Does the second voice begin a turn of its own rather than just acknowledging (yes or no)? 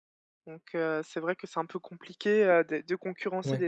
no